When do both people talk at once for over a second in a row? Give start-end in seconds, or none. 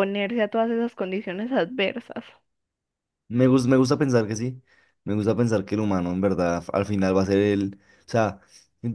none